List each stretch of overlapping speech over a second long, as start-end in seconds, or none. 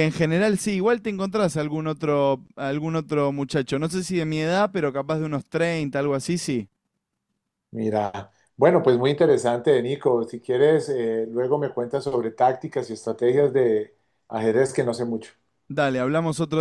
none